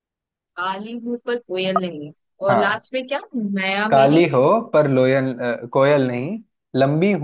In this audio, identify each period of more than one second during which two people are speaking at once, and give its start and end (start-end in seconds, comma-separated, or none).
none